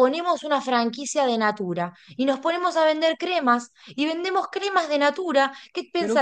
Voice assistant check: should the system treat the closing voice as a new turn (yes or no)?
no